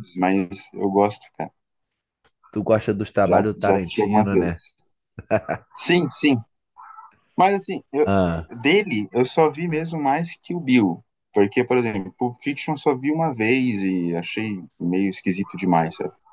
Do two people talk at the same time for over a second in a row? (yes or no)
yes